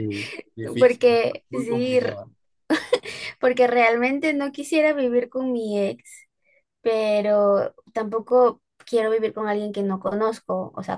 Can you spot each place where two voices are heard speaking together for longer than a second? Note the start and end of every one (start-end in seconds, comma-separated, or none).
0.8-2.2